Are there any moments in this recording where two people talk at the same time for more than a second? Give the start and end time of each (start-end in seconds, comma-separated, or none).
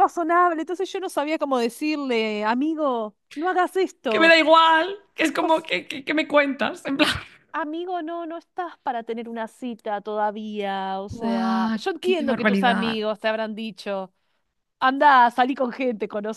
11.1-13.0